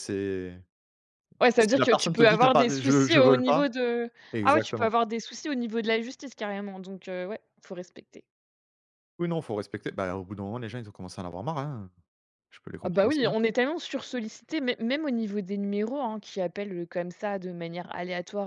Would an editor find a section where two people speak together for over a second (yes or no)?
yes